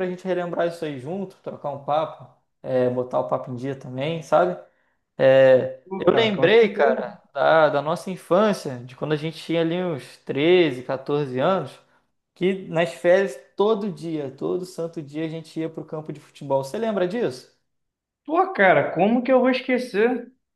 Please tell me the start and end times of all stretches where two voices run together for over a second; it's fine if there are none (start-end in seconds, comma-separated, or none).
5.8-7.1